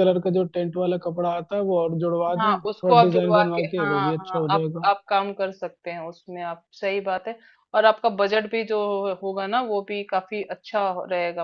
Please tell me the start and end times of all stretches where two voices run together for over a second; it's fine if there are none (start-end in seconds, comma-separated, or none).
2.4-4.9